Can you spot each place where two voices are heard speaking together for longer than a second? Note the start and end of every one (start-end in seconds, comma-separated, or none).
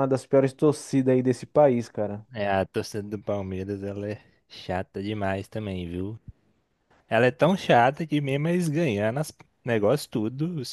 none